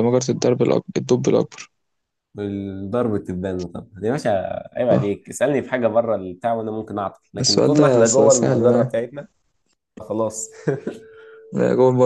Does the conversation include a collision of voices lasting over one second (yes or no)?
yes